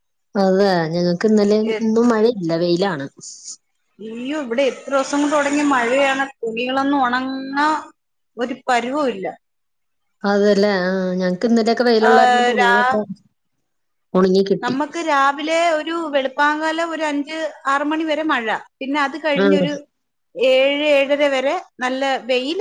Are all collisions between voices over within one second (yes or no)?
yes